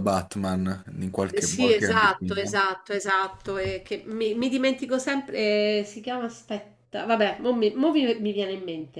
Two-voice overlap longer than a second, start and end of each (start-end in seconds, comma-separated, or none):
1.3-2.6